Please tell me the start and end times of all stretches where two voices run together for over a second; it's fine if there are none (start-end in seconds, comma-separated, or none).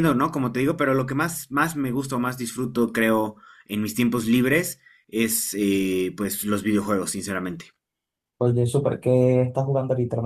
none